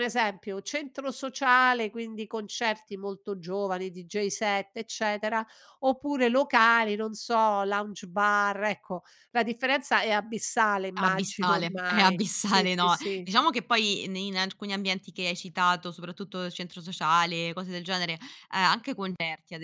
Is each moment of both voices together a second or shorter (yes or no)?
no